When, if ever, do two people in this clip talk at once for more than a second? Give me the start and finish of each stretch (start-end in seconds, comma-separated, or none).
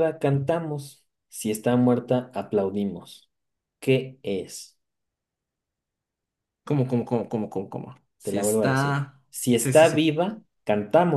8.2-10.1